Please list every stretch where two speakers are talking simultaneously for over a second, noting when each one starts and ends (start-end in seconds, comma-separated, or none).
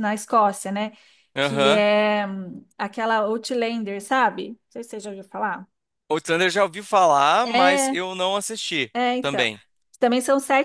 none